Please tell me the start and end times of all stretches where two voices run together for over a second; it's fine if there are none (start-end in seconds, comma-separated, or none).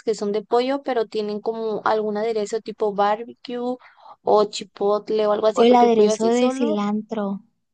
5.5-6.8